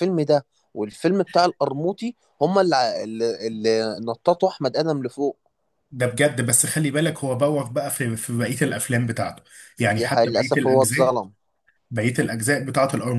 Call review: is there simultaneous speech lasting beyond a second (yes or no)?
yes